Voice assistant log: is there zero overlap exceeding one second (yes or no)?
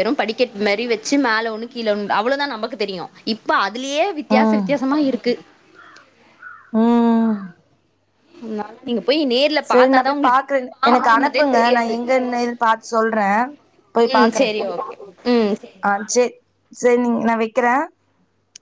no